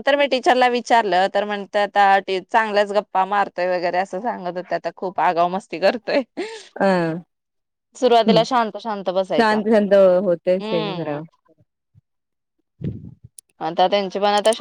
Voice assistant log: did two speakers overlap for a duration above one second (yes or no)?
no